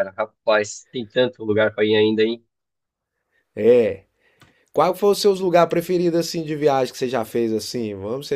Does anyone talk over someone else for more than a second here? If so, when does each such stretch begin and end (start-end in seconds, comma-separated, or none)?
none